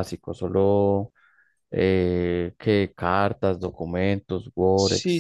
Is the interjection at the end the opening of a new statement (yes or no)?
yes